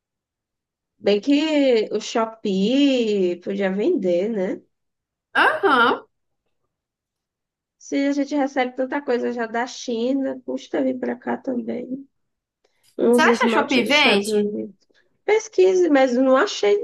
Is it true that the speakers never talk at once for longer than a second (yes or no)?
no